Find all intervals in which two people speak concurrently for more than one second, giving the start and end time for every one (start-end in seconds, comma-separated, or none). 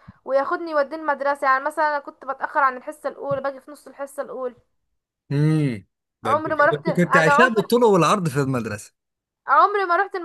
6.2-7.7